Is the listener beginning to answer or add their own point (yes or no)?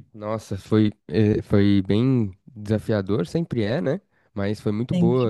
no